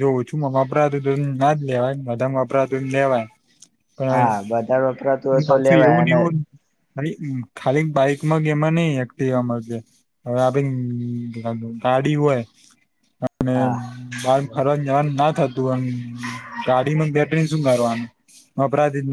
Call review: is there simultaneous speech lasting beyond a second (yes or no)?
yes